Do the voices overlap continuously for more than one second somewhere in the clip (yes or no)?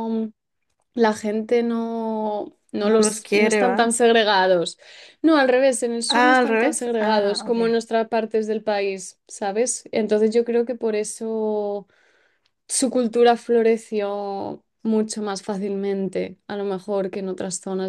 yes